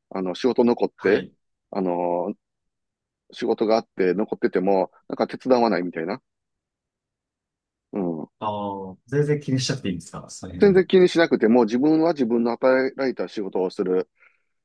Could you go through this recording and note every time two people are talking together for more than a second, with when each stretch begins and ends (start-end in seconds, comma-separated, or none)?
none